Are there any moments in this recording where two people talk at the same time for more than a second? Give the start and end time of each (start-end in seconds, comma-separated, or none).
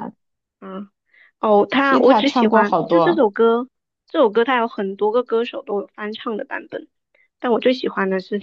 1.8-3.3